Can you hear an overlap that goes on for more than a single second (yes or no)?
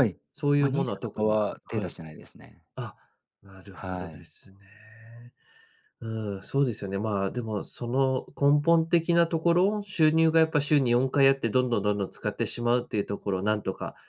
yes